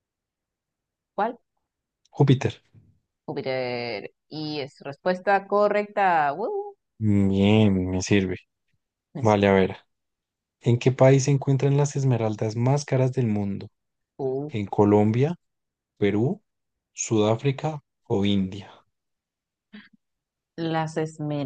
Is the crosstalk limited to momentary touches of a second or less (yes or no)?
yes